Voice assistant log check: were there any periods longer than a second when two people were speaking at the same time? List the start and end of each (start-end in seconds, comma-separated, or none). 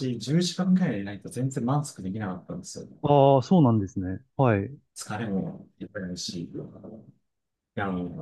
none